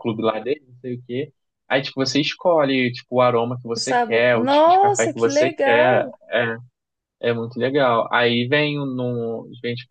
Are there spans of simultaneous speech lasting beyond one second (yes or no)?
yes